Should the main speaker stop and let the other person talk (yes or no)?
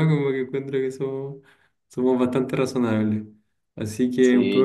yes